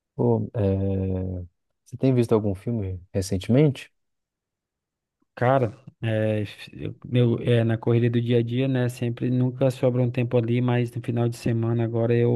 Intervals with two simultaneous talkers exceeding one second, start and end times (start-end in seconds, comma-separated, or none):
none